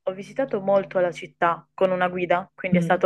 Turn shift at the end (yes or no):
no